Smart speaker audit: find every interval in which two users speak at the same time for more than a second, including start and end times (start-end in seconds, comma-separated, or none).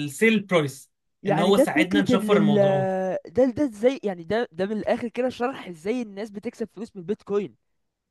1.3-2.9